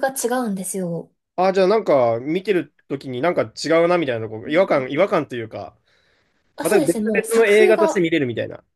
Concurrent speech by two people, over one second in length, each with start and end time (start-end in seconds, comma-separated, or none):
6.6-8.1